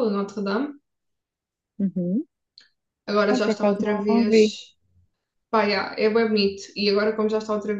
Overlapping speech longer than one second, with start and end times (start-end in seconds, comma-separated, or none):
3.3-4.5